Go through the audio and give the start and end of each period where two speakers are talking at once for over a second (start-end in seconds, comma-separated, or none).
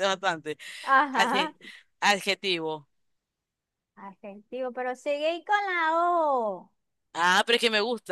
none